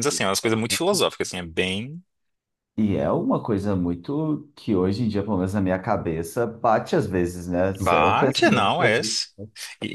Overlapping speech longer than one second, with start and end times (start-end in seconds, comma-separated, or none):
7.8-9.2